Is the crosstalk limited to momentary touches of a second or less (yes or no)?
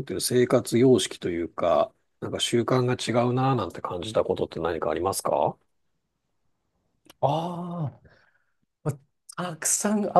yes